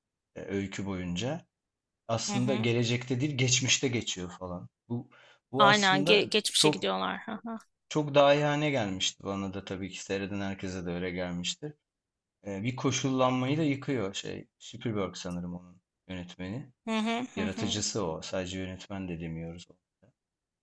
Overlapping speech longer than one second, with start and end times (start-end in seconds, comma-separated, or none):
5.6-6.9